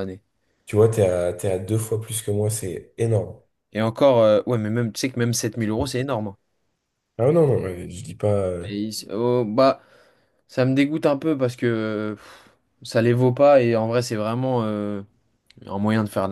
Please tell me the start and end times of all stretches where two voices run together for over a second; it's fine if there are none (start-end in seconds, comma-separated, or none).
none